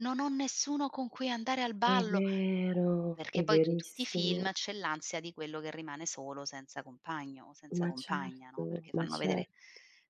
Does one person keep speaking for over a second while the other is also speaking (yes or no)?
yes